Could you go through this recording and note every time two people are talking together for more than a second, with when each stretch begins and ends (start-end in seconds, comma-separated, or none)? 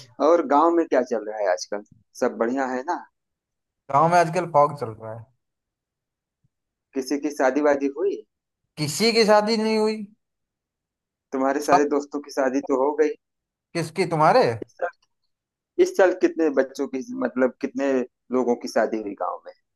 none